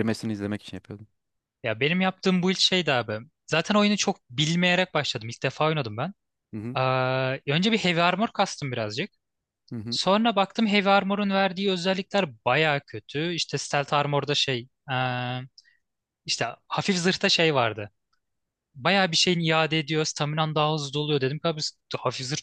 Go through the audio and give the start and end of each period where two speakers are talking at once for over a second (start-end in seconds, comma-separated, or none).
none